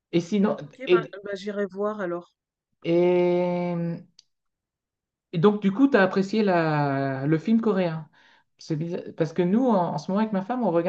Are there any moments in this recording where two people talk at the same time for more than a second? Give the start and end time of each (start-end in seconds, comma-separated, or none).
none